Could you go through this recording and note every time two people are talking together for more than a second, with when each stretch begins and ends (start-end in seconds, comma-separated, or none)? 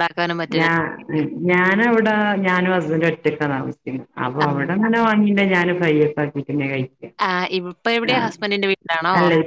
none